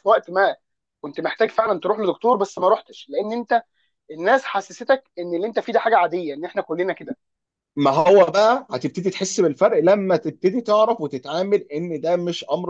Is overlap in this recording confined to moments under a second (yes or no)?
yes